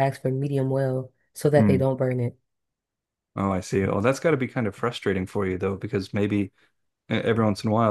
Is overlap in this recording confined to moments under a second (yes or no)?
yes